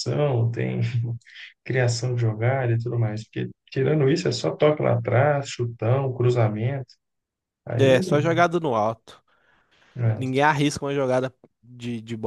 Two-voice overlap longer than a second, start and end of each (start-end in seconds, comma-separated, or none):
none